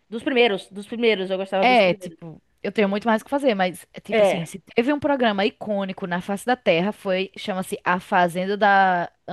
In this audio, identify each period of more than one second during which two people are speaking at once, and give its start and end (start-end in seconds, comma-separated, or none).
none